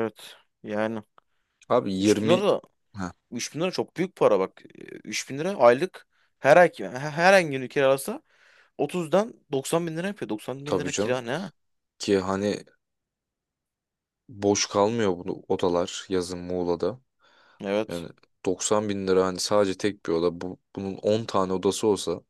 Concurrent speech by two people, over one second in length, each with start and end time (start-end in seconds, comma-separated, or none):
none